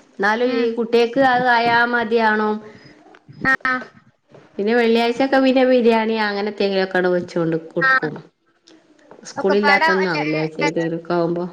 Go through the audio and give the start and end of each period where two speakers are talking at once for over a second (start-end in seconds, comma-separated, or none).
9.4-10.7